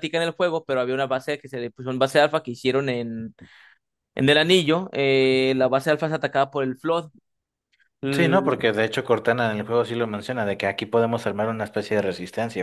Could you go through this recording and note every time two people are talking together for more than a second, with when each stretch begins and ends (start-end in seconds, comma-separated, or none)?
none